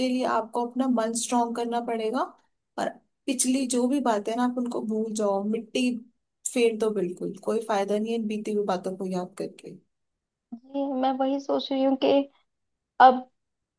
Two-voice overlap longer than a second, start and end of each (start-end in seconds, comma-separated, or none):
none